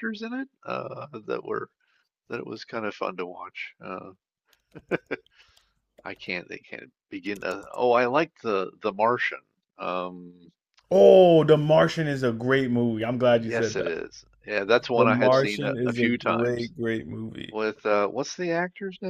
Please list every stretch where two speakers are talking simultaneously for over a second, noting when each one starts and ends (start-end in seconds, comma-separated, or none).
14.9-16.7